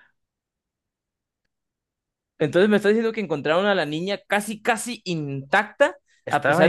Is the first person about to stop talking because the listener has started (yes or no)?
no